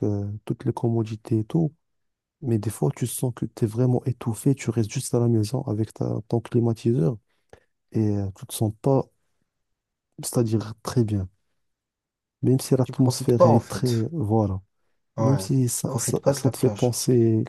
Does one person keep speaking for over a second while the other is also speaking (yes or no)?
yes